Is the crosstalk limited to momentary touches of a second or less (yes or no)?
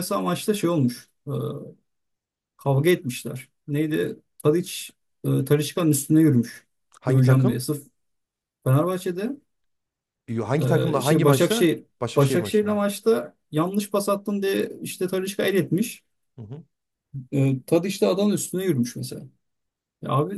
no